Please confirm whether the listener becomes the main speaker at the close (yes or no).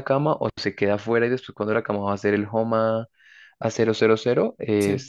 no